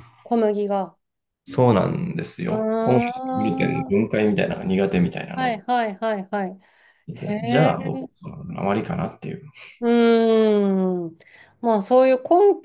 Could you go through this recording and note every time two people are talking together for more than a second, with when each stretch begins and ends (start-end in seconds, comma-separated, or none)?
2.5-3.9